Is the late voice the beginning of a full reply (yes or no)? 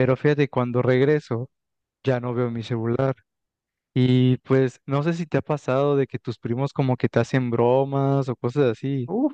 yes